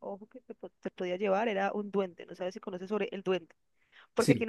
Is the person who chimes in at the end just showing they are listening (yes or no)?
yes